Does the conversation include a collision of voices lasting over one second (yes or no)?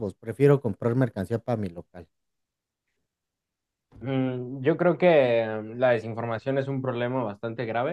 no